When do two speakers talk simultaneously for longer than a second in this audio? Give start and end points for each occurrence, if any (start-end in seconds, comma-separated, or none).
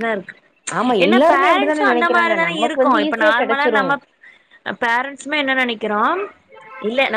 1.0-3.8